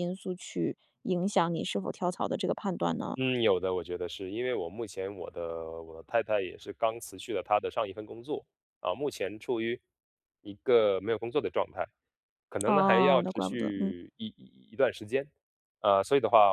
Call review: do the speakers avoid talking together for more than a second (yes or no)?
no